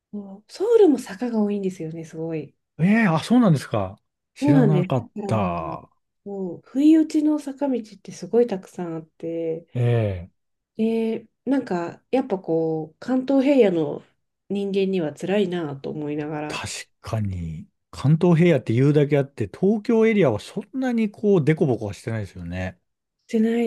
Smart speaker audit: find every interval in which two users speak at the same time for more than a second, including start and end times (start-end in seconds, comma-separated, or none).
4.4-5.8